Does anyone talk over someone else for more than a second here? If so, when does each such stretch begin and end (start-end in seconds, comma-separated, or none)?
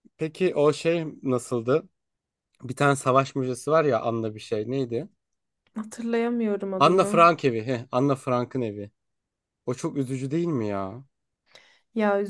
none